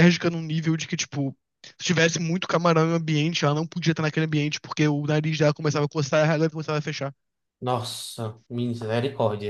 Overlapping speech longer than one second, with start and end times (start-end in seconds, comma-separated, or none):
none